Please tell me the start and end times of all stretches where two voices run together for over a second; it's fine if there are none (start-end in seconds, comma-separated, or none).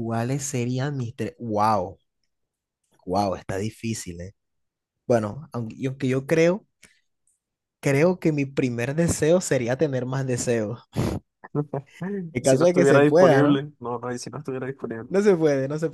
12.4-13.6